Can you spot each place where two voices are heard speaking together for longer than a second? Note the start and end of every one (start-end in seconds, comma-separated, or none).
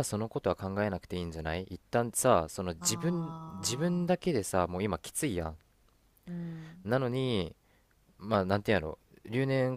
2.8-4.2